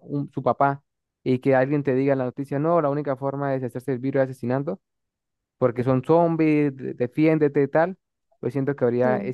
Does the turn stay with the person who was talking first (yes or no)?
yes